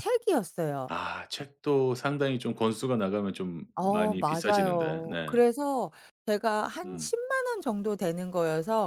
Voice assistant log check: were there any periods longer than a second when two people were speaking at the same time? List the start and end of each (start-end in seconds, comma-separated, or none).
3.8-5.3